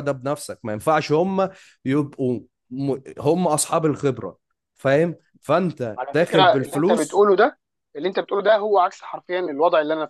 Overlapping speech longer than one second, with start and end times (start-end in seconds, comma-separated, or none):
6.0-7.2